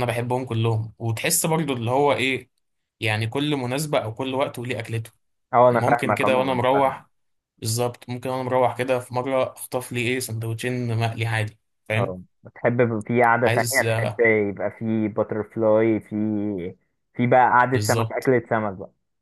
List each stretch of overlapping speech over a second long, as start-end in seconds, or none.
5.7-7.0